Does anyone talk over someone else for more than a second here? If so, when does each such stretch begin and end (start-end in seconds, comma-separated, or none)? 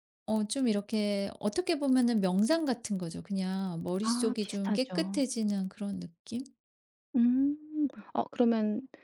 4.0-5.2